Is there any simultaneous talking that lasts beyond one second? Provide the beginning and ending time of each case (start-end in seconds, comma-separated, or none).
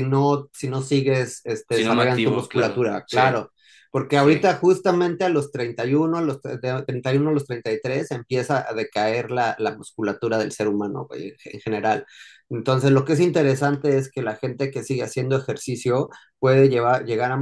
1.7-3.4